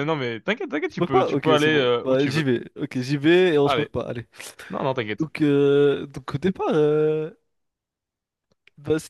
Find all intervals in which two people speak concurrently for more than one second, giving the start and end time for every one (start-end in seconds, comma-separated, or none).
0.9-2.4